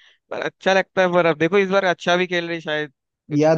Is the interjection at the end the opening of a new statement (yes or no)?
yes